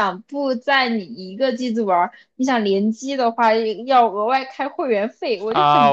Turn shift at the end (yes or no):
yes